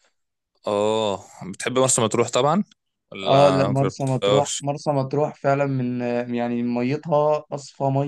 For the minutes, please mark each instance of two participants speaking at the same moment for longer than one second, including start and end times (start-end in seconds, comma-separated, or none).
3.2-4.6